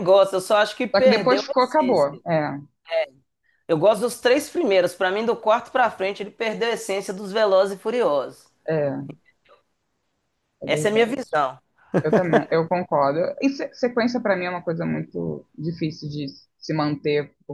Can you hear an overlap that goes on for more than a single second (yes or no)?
yes